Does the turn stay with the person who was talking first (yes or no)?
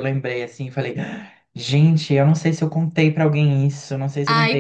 no